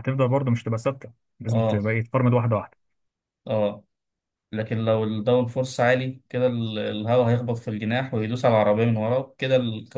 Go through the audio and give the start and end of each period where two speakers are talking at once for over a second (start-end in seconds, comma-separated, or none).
none